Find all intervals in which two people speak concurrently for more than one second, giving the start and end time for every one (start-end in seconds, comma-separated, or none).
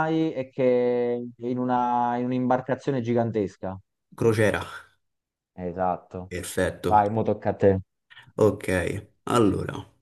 none